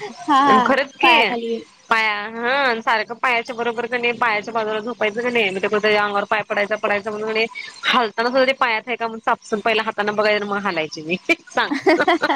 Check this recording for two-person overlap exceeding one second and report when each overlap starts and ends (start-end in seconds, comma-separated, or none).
none